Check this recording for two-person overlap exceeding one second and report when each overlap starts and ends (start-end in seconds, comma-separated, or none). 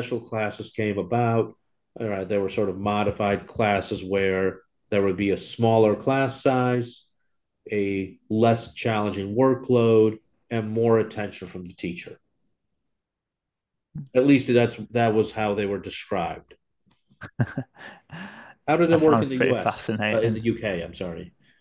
18.9-20.4